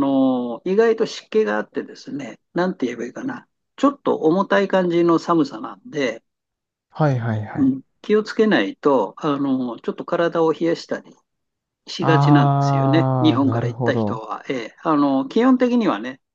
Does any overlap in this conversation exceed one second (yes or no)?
yes